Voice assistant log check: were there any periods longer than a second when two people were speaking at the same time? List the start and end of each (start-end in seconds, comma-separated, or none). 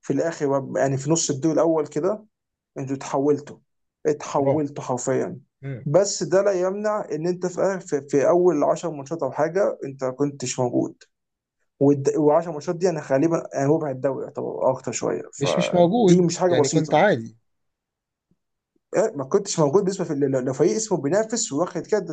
15.4-17.1